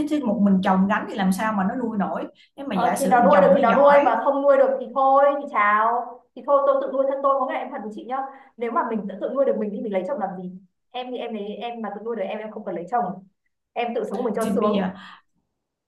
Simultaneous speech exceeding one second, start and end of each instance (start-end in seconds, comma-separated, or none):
2.7-4.1